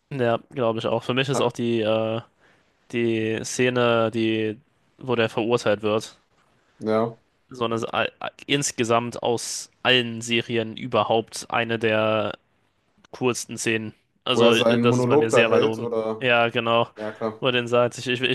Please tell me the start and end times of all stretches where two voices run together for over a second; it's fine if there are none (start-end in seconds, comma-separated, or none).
14.3-16.3